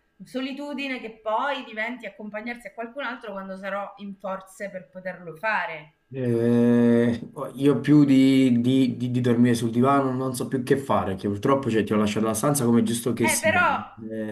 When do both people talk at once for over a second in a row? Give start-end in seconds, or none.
none